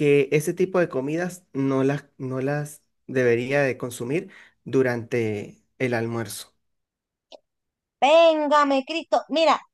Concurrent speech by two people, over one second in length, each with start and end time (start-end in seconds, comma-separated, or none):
none